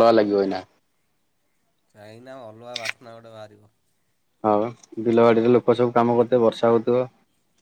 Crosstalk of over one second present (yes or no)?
no